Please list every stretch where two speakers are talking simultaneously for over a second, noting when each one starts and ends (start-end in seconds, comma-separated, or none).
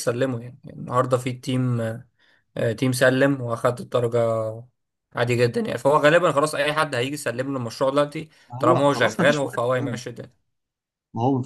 8.5-10.0